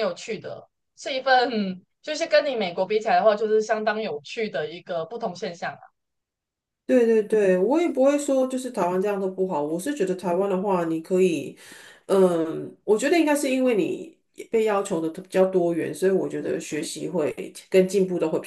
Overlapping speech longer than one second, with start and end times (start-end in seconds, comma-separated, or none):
none